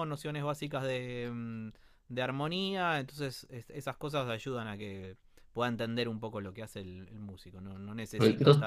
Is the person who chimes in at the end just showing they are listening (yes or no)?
yes